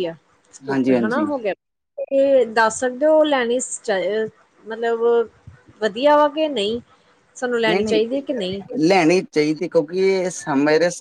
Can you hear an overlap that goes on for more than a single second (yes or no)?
no